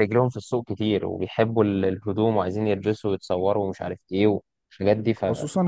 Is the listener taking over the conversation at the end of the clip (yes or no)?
yes